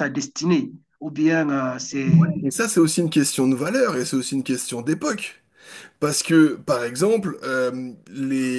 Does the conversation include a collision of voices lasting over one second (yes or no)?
no